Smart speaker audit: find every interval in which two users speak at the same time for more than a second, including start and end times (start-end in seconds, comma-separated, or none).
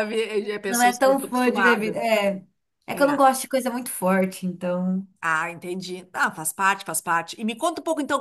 0.7-2.0